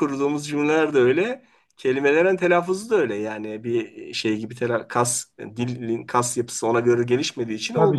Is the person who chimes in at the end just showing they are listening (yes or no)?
no